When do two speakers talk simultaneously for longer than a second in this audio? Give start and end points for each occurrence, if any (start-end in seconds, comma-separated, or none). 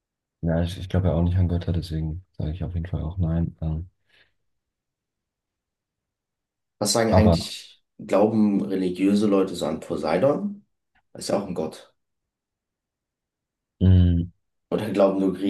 none